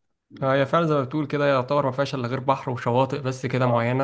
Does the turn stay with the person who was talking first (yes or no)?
no